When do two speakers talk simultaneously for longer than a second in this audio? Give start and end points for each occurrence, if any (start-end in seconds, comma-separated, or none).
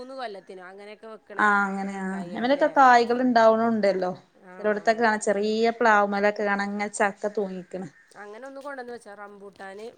none